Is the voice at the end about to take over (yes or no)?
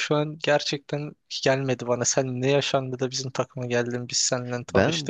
yes